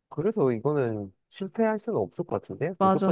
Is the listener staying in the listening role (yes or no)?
no